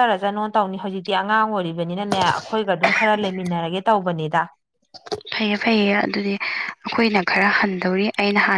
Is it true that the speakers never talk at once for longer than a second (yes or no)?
yes